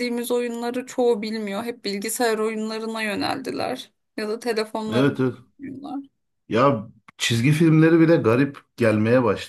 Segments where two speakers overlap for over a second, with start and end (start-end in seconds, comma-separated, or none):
none